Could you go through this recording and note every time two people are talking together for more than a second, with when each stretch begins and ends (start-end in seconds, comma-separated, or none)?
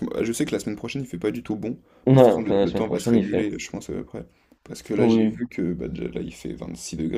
2.0-3.4